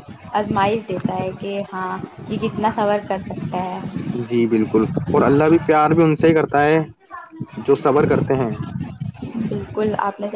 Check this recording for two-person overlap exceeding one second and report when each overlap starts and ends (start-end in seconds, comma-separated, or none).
none